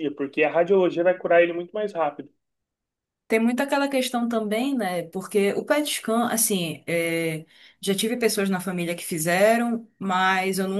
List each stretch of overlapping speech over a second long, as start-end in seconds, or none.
none